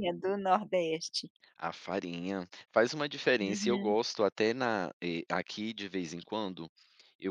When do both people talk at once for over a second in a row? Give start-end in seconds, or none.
none